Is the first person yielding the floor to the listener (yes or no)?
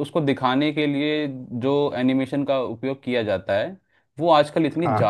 no